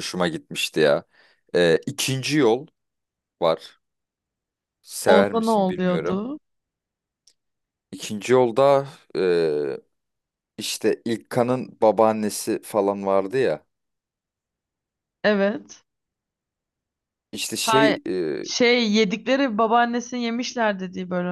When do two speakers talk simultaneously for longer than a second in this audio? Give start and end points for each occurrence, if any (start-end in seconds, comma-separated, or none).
5.1-6.3